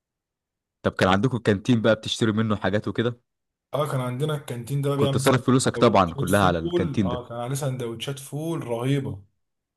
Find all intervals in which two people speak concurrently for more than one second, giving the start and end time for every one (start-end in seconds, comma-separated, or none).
5.0-7.2